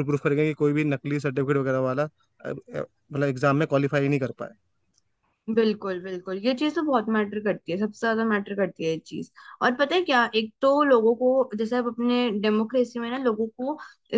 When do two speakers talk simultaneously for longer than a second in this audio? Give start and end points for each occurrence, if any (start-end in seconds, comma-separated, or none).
none